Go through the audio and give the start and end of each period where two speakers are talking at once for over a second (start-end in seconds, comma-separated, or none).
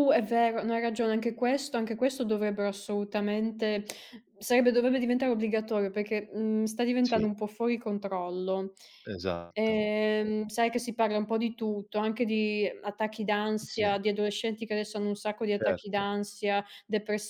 none